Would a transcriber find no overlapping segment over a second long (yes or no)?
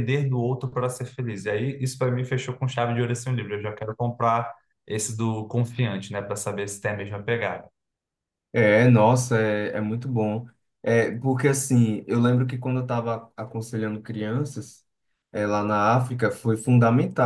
yes